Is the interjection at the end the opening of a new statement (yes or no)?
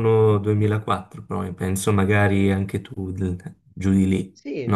yes